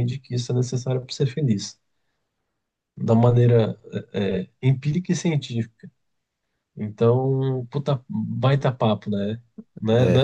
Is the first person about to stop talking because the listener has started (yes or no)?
no